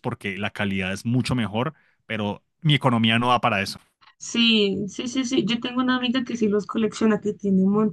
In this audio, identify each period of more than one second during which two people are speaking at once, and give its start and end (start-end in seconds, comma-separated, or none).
none